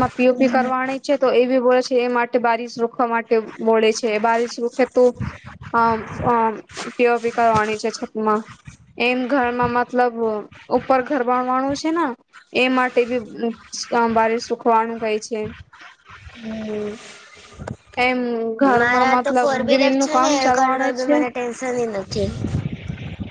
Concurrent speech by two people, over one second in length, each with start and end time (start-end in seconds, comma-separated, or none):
18.8-21.2